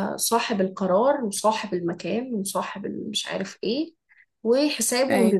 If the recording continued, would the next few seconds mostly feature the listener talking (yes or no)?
no